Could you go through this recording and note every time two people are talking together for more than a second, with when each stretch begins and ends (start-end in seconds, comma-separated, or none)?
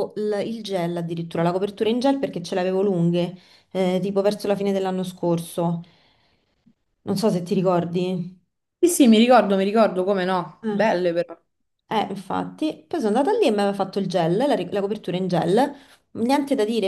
none